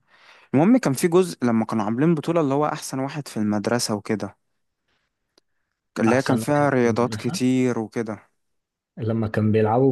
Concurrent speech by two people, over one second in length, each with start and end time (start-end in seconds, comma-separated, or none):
6.0-7.4